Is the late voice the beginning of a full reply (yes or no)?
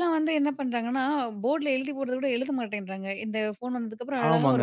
yes